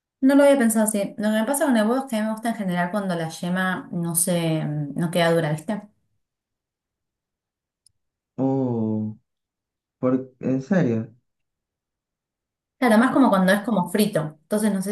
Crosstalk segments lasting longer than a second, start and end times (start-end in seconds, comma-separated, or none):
none